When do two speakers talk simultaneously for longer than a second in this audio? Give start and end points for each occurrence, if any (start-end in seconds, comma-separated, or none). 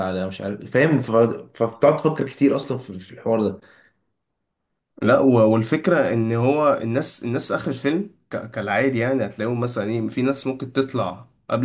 none